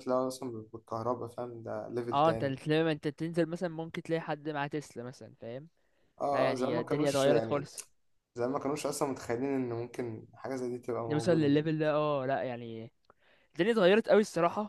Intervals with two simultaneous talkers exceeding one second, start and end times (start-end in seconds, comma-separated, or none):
6.3-7.7